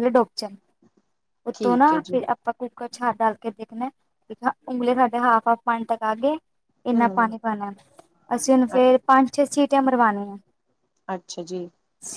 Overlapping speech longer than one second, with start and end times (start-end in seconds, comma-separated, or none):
none